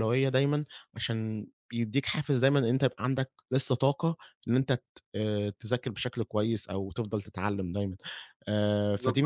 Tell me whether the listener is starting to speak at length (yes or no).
yes